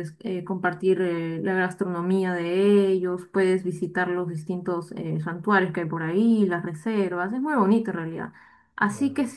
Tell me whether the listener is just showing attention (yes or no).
yes